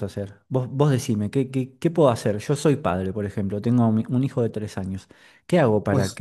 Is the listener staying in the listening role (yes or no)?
yes